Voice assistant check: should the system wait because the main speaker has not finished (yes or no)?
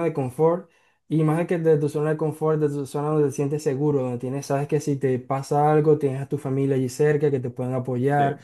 yes